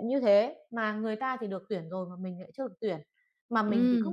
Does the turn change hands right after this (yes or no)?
no